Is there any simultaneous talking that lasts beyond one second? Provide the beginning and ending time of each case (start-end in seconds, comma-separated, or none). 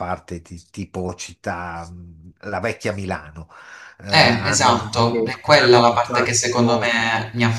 4.1-7.0